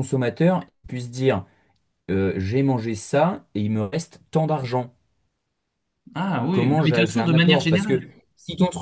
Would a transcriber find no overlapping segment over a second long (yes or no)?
no